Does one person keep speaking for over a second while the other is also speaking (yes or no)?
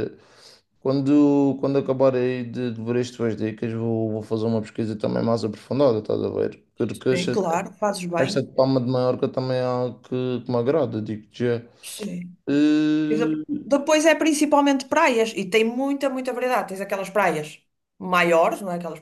no